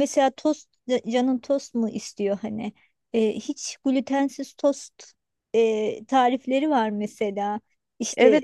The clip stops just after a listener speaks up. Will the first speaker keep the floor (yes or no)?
no